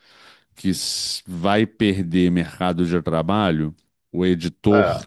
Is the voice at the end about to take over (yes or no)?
no